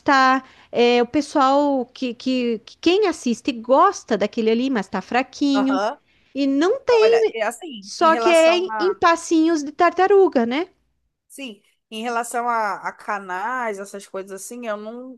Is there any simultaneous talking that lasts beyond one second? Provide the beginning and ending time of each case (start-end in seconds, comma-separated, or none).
7.8-9.0